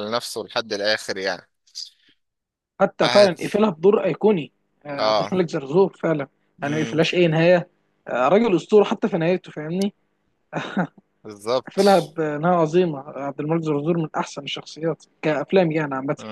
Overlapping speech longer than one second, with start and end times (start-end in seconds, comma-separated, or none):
none